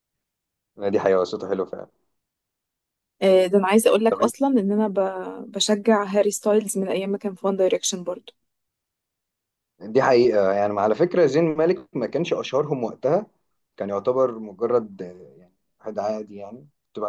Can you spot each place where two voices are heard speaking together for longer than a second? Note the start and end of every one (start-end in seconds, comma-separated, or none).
none